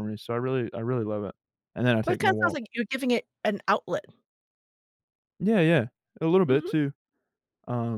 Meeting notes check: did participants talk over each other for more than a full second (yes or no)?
no